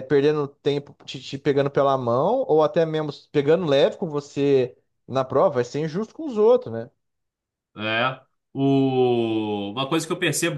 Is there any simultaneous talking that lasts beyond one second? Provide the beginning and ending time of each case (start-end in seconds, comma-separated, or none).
none